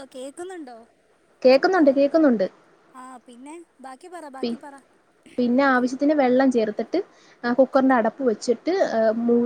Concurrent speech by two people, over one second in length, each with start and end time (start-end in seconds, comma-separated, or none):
none